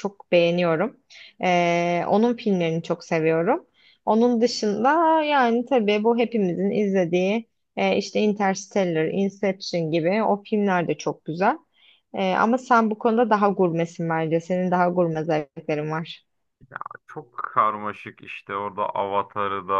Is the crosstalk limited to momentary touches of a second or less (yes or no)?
yes